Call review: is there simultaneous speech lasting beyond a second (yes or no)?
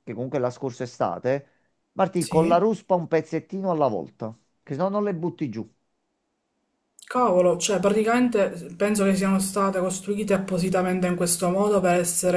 no